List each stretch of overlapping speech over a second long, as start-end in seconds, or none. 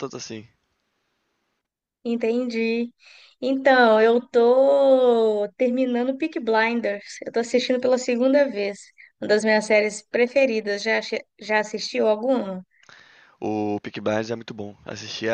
none